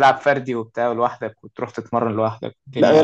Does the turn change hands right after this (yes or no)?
yes